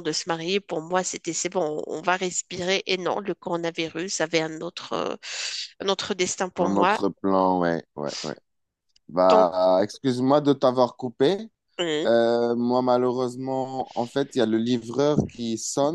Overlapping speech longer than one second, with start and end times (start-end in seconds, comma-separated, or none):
none